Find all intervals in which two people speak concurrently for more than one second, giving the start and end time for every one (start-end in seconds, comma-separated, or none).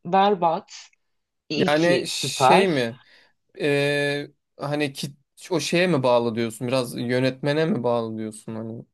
1.6-2.8